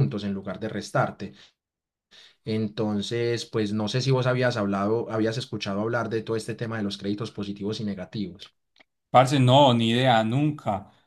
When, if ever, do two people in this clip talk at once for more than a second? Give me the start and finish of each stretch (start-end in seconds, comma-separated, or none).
none